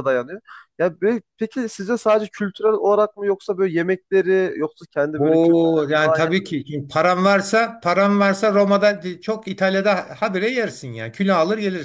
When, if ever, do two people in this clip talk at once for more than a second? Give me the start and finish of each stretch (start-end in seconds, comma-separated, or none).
5.2-6.4